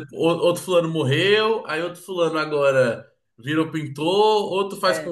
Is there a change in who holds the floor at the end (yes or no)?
no